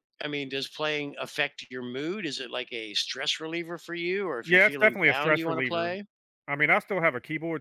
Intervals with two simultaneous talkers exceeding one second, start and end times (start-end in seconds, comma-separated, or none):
4.4-5.9